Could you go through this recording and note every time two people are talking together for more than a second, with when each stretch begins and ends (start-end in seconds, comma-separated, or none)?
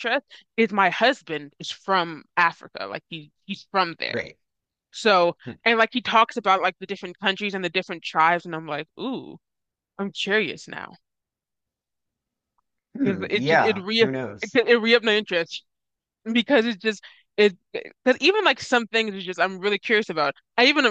13.0-14.6